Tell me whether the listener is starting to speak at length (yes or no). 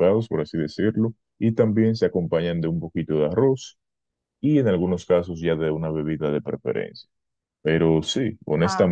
no